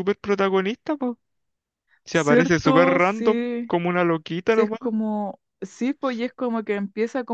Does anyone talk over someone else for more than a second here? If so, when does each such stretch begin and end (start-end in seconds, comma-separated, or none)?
2.1-3.7